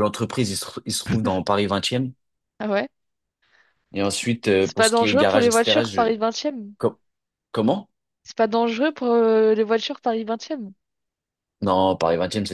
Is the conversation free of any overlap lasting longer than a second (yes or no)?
no